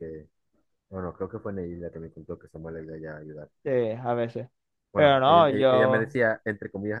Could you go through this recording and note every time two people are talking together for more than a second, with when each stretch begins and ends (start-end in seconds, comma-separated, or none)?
4.9-6.2